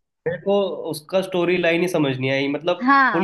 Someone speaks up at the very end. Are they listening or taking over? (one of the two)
taking over